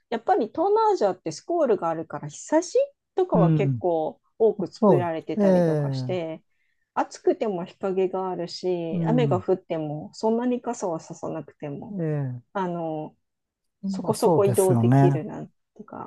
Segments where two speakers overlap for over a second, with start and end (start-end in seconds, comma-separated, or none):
4.8-6.2, 14.0-15.2